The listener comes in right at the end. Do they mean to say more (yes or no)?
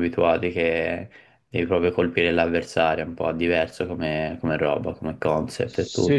yes